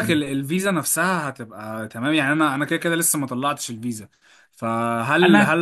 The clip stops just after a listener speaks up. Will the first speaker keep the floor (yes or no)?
yes